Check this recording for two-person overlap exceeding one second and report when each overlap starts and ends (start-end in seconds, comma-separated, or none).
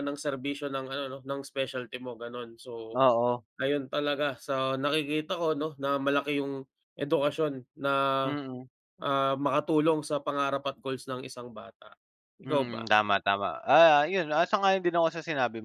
none